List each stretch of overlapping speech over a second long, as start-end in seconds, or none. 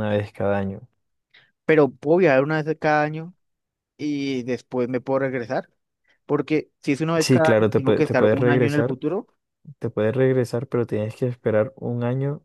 7.2-9.0